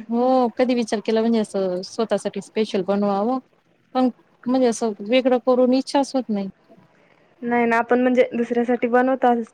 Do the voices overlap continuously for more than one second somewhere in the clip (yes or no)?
no